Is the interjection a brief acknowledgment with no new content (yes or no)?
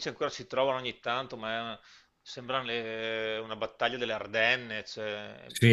yes